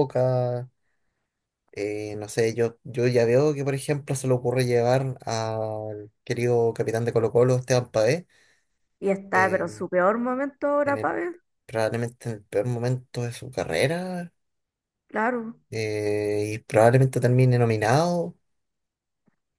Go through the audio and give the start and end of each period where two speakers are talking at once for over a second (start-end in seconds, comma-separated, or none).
none